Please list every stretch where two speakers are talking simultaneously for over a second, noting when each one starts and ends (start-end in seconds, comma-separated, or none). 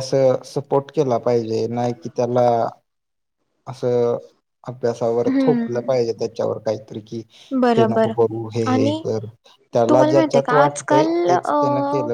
9.9-11.6